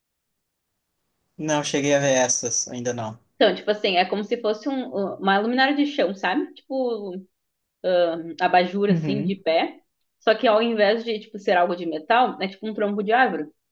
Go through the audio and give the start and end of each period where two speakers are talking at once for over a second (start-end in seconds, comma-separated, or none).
none